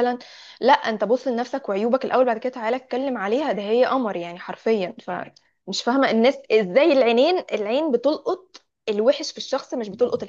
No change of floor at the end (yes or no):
yes